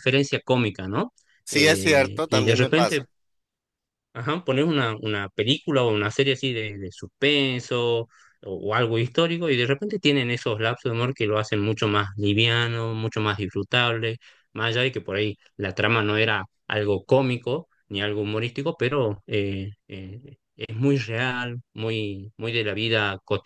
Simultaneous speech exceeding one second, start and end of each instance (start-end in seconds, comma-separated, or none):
1.5-3.0